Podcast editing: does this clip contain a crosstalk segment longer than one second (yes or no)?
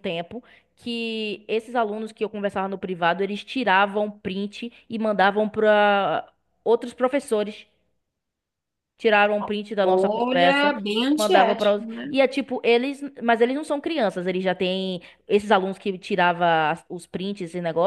yes